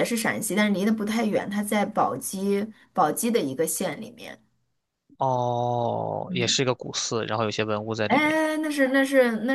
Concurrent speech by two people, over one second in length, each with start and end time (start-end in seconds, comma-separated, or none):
none